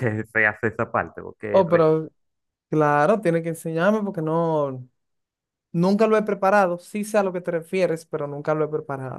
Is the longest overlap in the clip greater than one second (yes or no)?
no